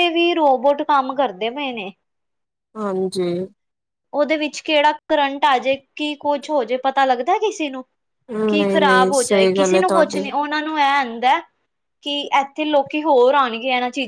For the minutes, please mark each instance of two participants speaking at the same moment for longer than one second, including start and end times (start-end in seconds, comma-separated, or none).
8.5-10.2